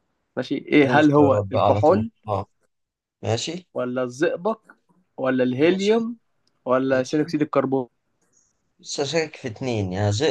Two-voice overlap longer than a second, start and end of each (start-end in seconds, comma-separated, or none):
0.8-2.1